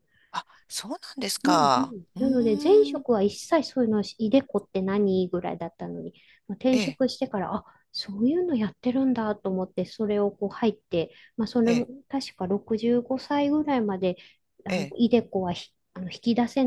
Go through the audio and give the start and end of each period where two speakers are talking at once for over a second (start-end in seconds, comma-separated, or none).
1.4-3.0